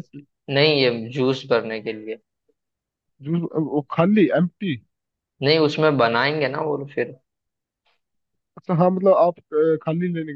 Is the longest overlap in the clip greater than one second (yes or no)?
no